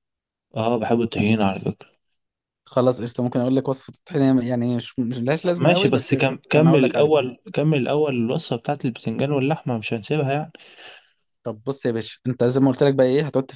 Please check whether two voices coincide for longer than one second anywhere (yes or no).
yes